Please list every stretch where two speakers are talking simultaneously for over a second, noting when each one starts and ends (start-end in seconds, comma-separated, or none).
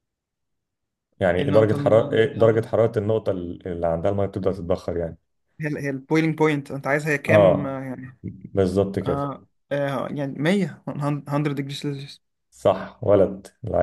1.4-2.6